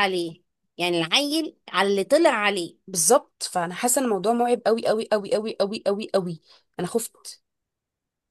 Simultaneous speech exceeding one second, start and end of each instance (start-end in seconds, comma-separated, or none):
none